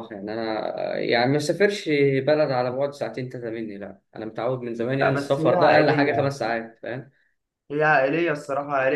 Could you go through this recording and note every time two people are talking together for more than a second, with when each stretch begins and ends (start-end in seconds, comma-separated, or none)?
5.0-6.3